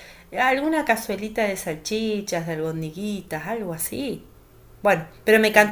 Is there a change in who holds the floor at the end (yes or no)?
no